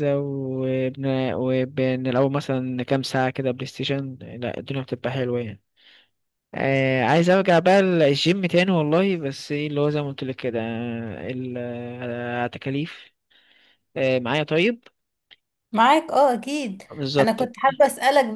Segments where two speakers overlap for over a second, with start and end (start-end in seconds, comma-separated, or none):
none